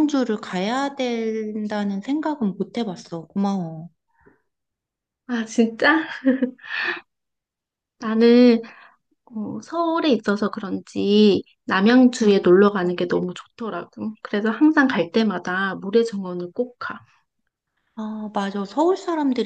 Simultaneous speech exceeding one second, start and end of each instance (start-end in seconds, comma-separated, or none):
none